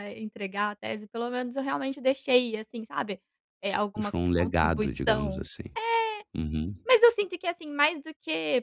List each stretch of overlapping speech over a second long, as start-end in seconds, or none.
3.9-5.5